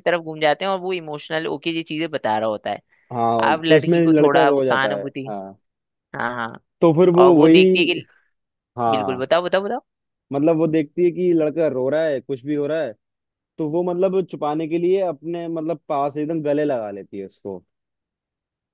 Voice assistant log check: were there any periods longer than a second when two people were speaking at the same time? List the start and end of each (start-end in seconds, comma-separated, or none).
3.5-5.3